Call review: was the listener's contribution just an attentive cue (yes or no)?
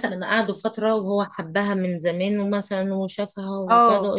yes